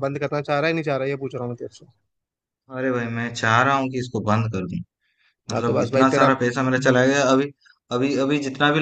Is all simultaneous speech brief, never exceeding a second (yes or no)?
no